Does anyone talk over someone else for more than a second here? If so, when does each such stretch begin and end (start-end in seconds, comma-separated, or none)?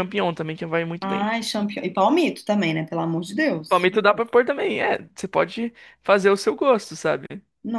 none